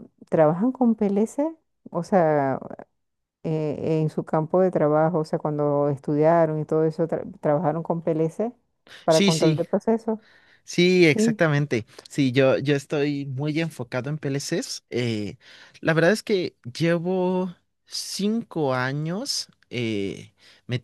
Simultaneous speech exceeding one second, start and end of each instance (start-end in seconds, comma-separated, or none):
none